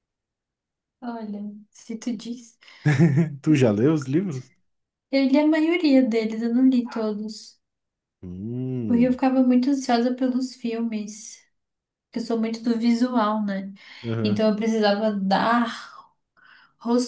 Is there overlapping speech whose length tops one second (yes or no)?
no